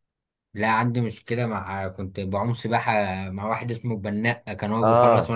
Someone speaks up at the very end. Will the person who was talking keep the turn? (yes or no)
no